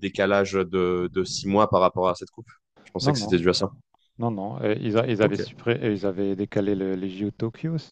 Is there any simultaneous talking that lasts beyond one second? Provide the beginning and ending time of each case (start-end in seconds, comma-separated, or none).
none